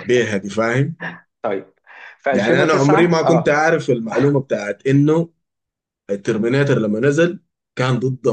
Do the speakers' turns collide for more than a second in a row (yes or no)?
yes